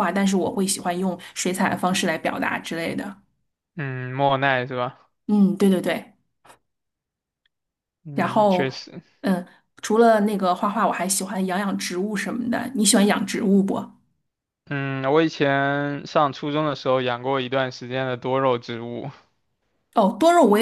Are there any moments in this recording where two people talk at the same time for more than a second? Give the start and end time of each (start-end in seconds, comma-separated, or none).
none